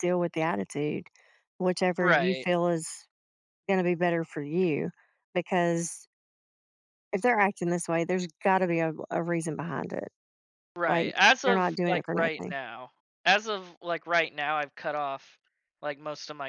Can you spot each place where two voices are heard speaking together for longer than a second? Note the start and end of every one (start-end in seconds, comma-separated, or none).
10.9-12.5